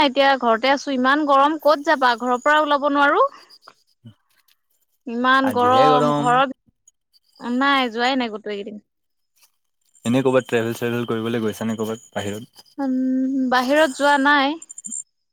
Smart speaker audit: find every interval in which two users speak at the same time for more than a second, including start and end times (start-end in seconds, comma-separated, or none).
none